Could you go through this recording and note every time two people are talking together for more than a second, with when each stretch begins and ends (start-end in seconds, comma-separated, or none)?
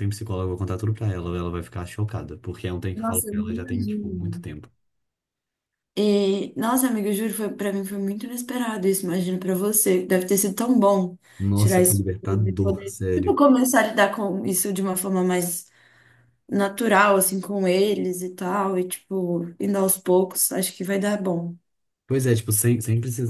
2.9-4.5, 11.5-13.4